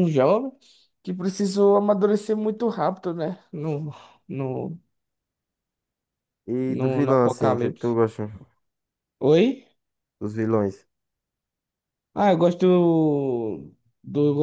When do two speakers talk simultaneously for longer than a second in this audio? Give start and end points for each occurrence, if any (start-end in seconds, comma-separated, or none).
6.7-8.0